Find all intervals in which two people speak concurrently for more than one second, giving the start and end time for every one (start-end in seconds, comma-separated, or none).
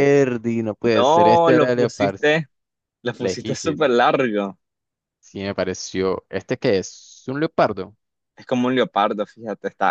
0.9-2.2